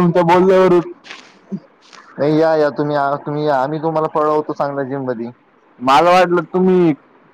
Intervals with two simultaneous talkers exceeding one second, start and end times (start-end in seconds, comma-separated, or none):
none